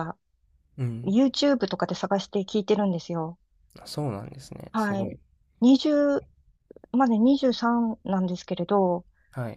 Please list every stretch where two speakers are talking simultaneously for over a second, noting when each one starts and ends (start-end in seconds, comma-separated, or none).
none